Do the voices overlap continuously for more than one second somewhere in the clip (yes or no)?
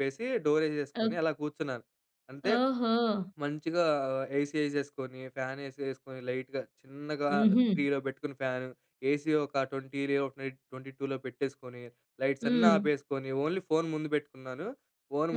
no